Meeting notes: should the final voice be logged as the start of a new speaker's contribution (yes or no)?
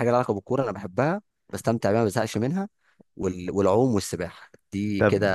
yes